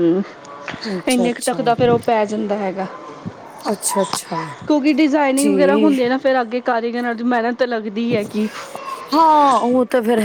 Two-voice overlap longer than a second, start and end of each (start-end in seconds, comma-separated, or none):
none